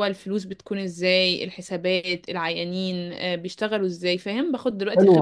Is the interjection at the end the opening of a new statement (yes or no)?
yes